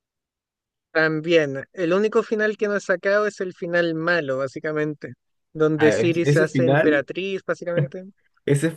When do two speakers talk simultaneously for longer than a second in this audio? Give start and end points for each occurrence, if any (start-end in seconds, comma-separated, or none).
5.7-7.0